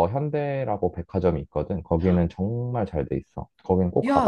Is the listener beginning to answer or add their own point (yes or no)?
yes